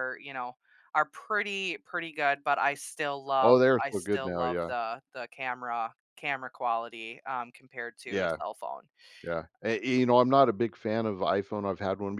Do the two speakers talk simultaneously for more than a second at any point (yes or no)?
yes